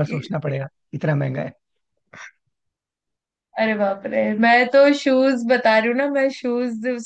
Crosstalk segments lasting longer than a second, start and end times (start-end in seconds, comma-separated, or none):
none